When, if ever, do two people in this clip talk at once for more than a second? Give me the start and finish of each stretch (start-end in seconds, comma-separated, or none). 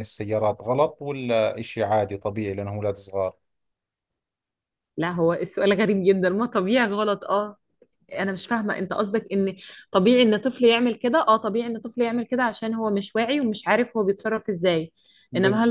none